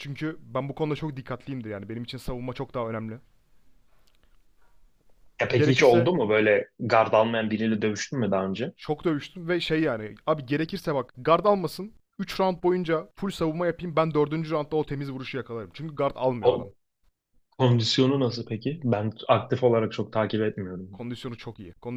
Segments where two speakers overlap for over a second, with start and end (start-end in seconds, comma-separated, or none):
none